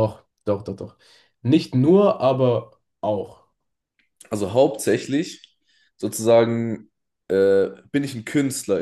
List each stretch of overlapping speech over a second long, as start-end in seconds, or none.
none